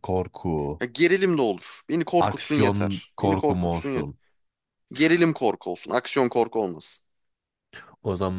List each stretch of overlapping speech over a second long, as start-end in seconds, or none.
2.2-4.1